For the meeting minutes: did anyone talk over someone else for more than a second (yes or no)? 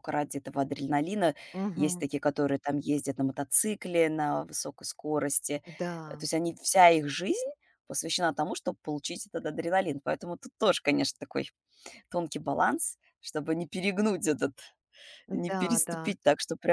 no